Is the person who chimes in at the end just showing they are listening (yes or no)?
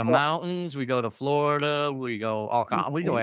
no